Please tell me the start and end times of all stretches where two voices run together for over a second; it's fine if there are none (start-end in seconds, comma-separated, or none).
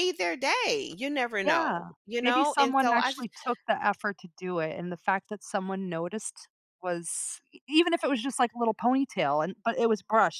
1.4-3.3